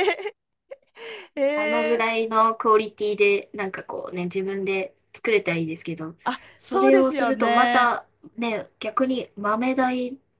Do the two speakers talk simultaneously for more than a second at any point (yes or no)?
yes